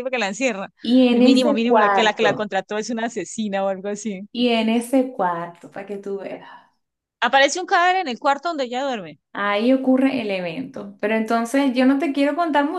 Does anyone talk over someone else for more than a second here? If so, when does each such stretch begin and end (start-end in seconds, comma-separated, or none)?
1.1-2.5